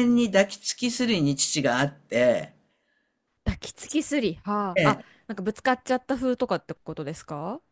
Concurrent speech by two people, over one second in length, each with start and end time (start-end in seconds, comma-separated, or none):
none